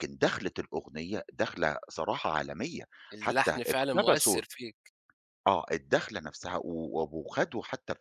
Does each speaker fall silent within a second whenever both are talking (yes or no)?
no